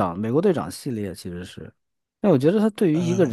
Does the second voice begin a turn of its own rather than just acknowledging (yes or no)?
no